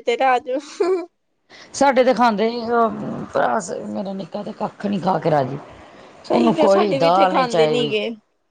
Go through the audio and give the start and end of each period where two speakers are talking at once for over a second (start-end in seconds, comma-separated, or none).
6.3-7.9